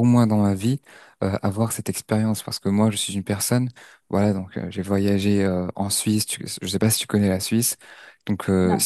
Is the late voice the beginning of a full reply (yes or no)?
no